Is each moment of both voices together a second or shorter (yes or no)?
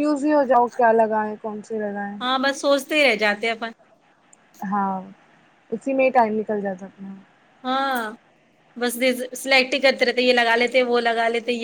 yes